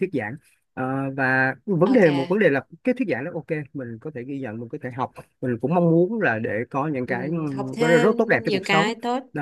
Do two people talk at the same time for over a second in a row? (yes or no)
yes